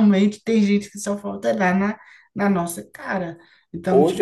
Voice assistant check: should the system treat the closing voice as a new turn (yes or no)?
yes